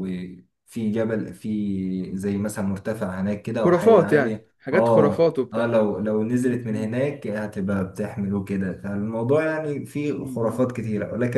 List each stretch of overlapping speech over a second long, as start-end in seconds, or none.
3.6-5.8